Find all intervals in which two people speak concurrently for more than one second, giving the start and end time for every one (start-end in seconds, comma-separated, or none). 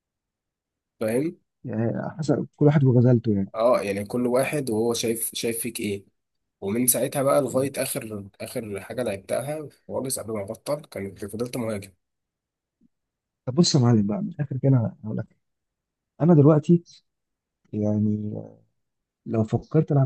none